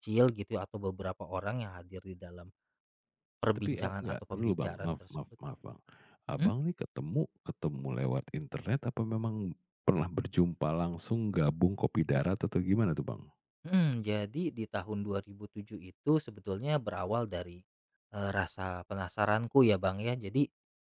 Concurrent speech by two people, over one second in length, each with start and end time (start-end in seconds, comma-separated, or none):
3.6-5.4